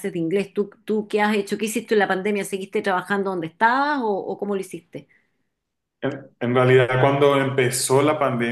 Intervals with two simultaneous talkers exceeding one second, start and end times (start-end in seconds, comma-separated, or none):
none